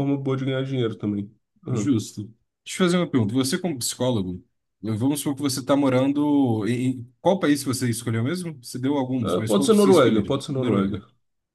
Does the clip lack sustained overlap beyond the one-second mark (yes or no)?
no